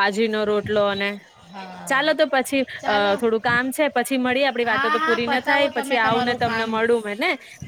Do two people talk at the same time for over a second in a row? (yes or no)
yes